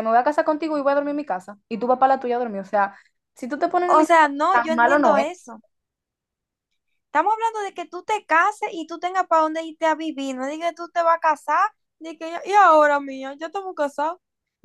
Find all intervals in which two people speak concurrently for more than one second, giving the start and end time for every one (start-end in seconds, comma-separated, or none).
3.9-5.2